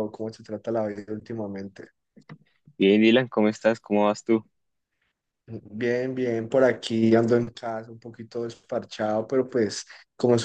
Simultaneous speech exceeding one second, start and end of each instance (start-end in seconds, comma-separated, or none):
none